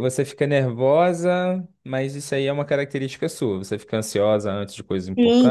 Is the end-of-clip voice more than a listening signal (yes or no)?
yes